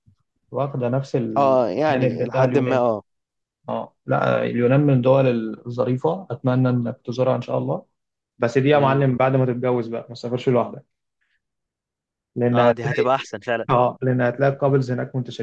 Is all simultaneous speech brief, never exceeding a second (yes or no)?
no